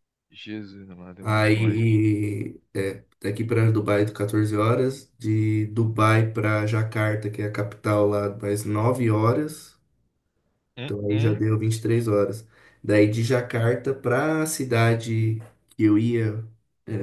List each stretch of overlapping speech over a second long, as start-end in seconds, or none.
none